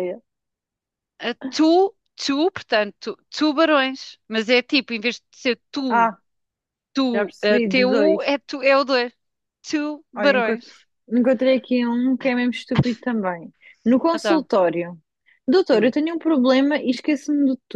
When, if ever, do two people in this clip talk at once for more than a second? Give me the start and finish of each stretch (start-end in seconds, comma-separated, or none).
7.1-8.3